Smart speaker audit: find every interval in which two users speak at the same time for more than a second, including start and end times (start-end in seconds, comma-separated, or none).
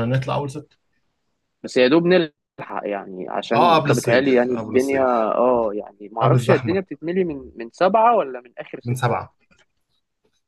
3.5-5.3